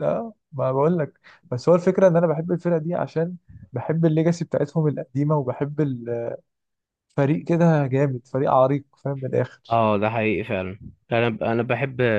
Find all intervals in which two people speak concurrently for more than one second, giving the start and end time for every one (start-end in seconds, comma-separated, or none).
none